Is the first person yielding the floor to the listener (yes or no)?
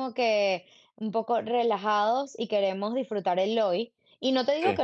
no